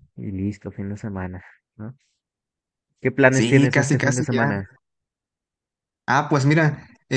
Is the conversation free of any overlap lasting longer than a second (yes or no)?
no